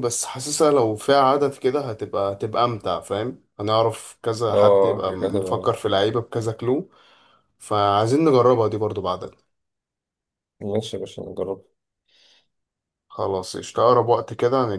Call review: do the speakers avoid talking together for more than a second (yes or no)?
no